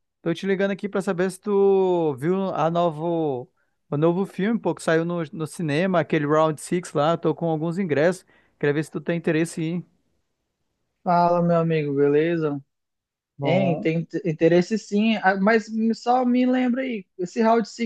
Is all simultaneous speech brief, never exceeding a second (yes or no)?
yes